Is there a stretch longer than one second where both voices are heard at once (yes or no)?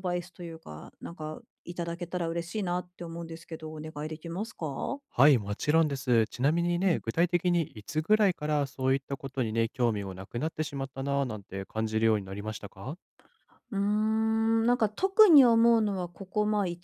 no